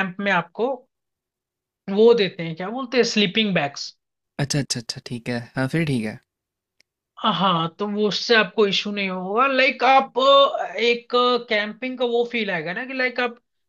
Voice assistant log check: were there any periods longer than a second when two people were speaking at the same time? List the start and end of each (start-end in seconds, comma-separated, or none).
none